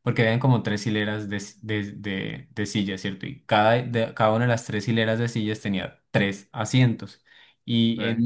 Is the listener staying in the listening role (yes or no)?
yes